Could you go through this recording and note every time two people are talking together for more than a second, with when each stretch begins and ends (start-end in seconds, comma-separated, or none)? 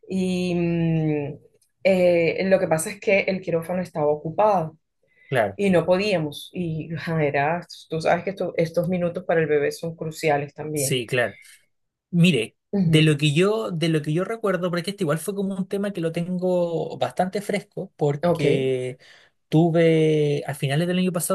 none